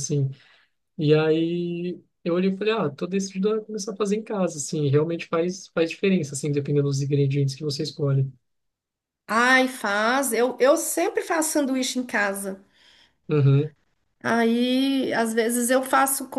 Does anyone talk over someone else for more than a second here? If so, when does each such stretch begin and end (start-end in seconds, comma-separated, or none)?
none